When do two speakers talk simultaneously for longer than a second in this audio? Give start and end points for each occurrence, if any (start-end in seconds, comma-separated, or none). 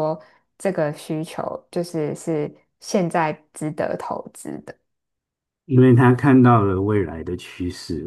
none